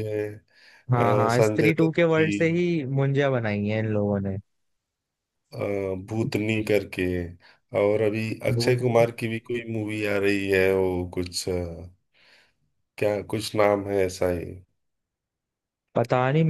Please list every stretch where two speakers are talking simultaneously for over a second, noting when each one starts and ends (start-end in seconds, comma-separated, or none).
1.0-2.3